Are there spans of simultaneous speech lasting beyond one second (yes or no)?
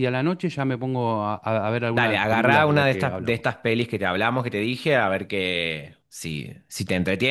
yes